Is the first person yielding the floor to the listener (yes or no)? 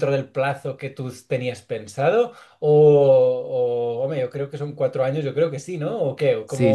yes